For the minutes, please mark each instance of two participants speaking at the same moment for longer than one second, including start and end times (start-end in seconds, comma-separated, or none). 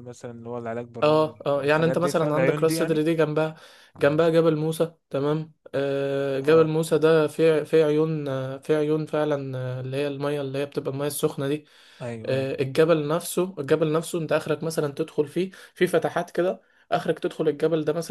1.0-3.0